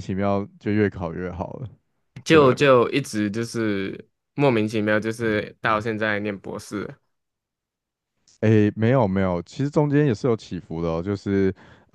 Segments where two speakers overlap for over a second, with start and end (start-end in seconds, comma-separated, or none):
none